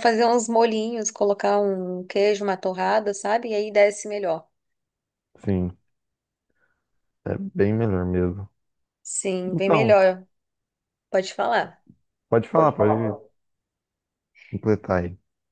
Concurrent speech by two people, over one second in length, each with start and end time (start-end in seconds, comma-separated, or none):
none